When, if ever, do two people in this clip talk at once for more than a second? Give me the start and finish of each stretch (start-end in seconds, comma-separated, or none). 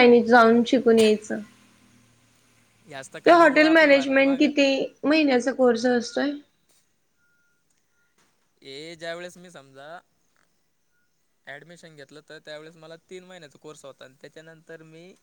3.3-4.5